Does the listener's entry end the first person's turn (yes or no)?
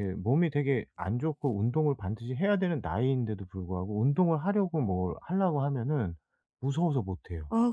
yes